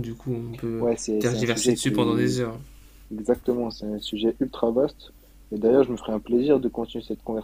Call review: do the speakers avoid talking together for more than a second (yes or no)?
no